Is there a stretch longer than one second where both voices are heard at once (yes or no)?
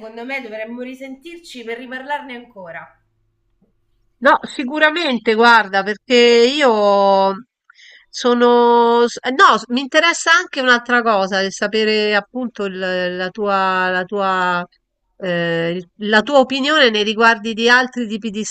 no